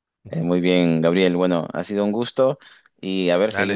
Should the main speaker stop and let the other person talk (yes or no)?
no